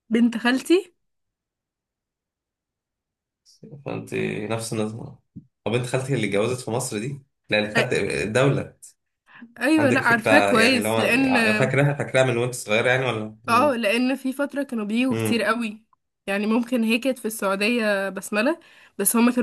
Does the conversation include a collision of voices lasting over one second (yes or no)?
yes